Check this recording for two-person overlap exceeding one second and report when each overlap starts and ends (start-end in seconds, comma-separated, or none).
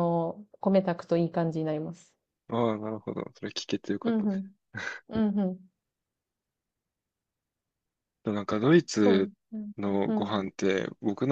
none